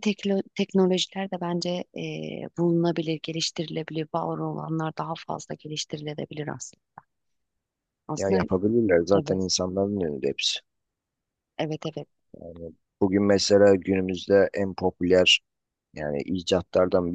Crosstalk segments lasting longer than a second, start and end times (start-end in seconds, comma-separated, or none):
none